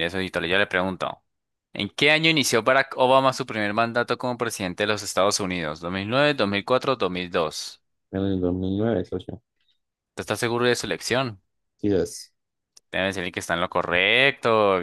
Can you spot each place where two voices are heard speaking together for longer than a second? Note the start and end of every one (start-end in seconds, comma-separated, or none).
none